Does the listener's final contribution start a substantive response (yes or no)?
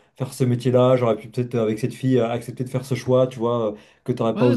yes